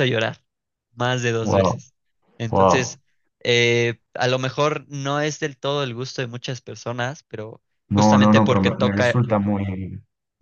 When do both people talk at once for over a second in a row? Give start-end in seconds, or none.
7.9-9.3